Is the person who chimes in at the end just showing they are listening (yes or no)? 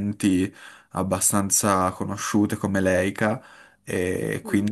yes